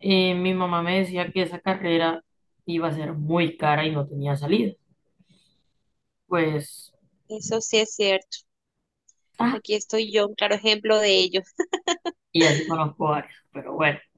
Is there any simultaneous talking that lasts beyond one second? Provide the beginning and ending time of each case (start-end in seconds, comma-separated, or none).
none